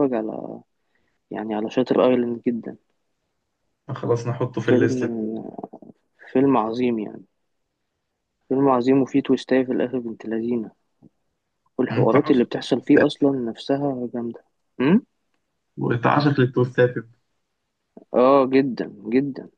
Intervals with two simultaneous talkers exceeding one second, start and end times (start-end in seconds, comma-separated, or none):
11.9-13.2